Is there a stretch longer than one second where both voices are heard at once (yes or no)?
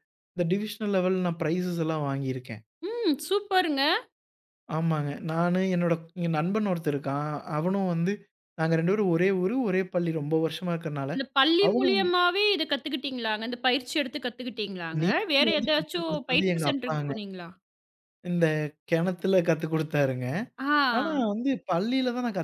yes